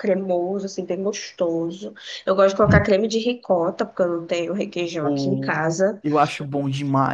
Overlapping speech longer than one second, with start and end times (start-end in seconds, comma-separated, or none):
none